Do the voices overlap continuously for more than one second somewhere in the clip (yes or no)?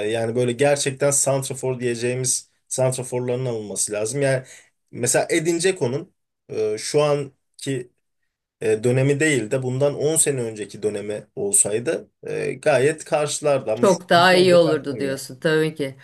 yes